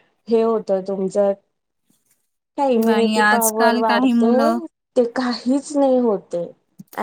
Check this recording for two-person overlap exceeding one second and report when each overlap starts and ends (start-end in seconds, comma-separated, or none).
2.9-4.3